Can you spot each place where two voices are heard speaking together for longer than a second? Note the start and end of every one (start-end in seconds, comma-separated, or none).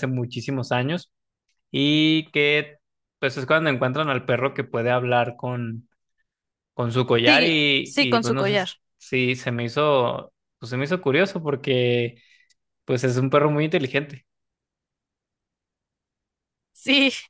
7.2-8.7